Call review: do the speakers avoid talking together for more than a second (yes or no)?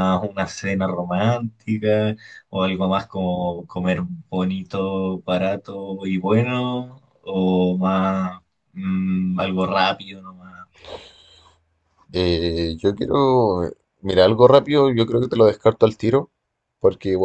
yes